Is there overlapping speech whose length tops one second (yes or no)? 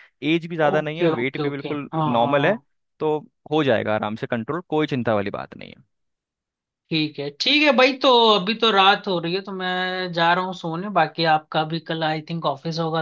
yes